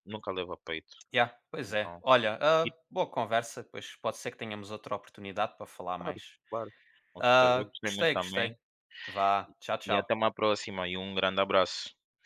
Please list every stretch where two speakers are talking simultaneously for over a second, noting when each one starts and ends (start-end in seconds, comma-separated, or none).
7.2-8.6